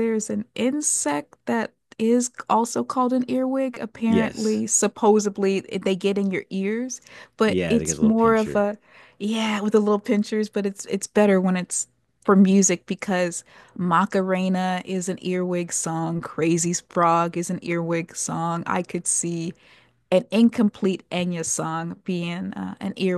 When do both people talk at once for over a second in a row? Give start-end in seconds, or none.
7.5-8.7